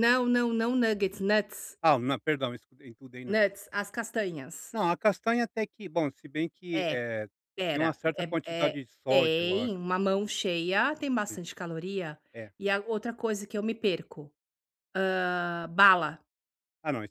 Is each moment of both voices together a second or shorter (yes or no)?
no